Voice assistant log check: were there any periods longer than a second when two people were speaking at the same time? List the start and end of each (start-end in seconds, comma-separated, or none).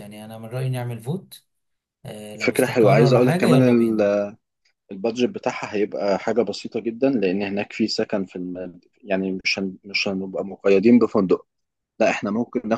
2.4-3.6